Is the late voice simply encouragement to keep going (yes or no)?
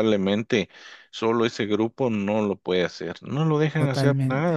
yes